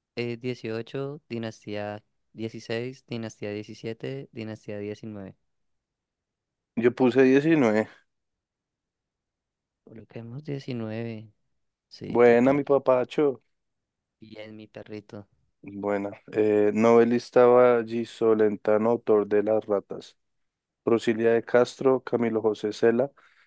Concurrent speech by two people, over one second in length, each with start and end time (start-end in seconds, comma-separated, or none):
none